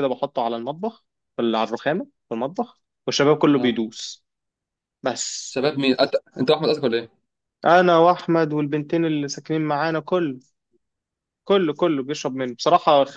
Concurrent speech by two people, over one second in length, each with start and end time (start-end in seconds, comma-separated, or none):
none